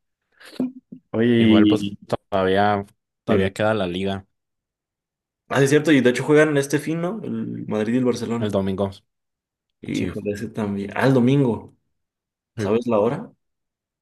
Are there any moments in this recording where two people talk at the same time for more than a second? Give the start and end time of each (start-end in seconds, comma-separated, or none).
none